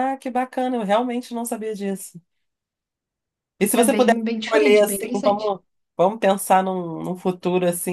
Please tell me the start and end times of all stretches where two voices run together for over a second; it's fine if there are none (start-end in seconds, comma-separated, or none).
3.7-5.6